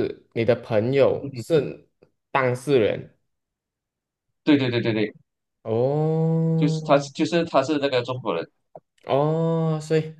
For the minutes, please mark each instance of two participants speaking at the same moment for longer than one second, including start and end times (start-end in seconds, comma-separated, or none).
none